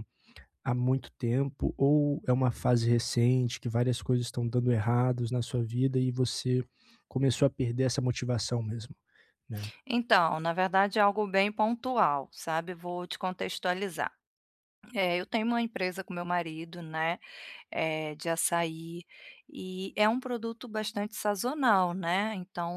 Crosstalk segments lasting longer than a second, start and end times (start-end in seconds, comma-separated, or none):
none